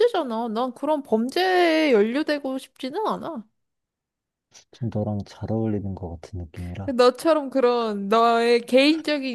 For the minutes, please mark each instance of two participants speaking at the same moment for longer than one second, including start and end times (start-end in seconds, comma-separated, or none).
none